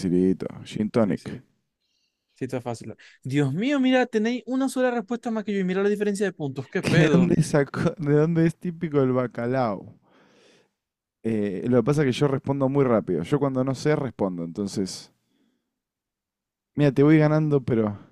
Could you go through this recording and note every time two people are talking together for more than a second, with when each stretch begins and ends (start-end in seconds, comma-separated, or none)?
none